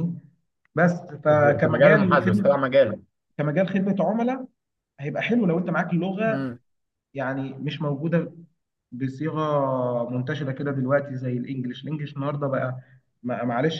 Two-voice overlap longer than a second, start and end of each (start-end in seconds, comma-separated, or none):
1.3-2.6